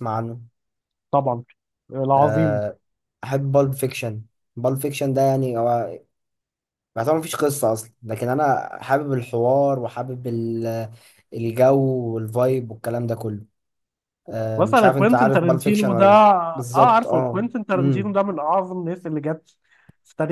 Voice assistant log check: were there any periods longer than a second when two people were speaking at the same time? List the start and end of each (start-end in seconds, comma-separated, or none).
14.6-18.1